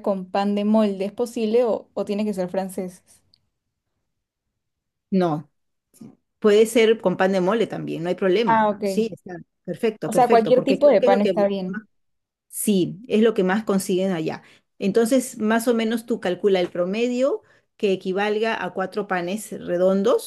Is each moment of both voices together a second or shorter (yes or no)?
no